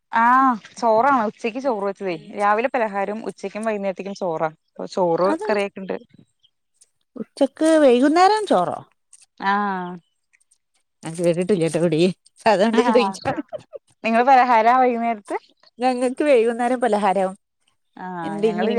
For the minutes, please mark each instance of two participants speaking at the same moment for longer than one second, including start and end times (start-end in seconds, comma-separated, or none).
none